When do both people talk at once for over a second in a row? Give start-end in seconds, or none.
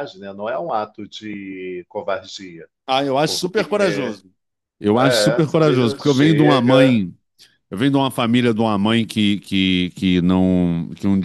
4.9-7.0